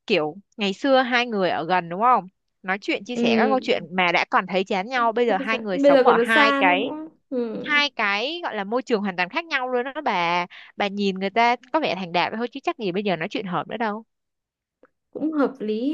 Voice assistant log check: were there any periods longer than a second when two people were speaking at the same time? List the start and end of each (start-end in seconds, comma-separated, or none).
5.3-6.9